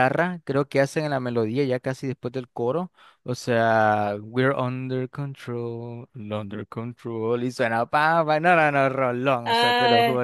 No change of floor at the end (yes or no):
yes